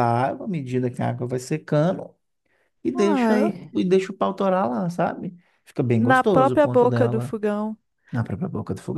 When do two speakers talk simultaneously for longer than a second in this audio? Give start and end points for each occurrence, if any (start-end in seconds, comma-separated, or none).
6.0-7.4